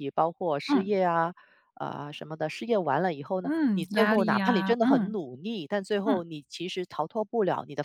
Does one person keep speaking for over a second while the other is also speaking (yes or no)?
yes